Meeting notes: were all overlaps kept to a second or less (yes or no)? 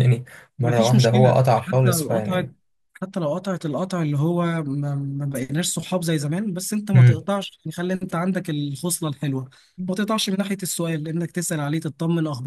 no